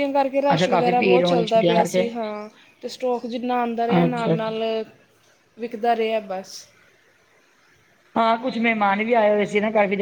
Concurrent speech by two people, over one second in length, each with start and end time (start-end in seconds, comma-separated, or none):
0.5-2.0